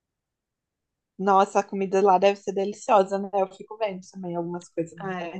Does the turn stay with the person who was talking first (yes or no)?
no